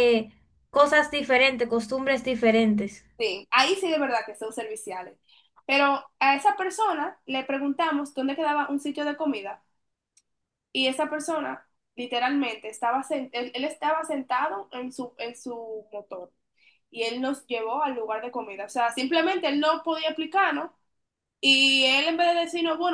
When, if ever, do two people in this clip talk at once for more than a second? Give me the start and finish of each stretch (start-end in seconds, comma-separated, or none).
none